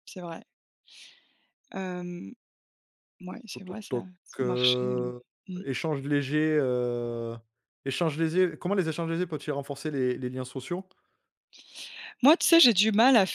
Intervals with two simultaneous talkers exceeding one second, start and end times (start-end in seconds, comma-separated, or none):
3.5-5.1